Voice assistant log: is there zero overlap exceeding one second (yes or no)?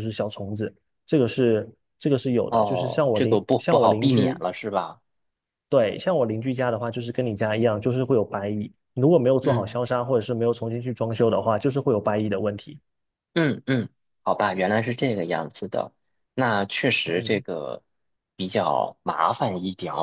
no